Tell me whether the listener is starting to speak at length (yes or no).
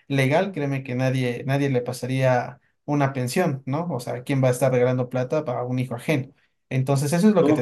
yes